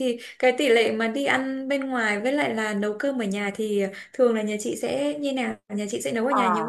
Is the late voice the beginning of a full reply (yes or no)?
yes